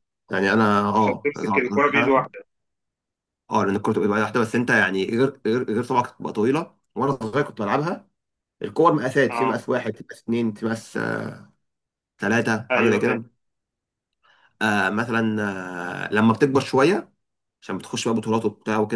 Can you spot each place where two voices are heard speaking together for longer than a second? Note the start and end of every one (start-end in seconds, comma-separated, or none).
1.0-2.3